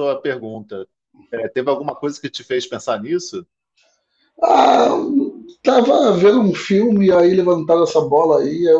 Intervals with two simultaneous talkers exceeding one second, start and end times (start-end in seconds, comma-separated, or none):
none